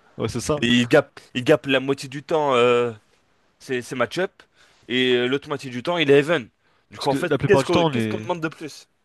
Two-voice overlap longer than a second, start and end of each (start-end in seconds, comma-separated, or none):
7.0-8.3